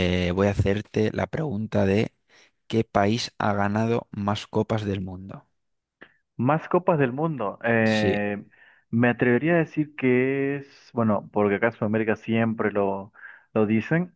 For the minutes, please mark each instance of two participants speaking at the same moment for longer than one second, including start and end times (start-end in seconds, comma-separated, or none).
none